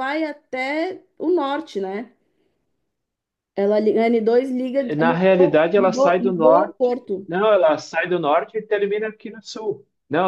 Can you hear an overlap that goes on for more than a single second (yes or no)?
yes